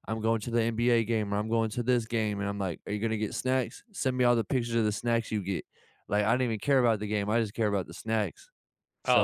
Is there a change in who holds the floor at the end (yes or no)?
yes